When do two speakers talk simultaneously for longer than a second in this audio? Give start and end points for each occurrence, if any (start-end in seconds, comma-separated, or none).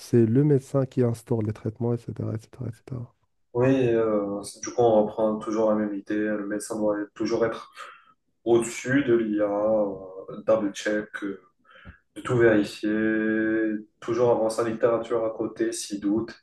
none